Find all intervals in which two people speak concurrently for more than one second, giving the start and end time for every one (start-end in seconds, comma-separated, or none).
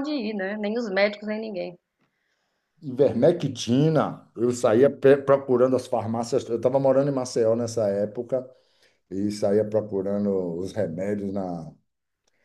none